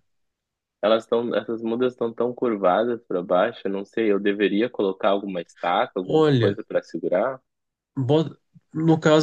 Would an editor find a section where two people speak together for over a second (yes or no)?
no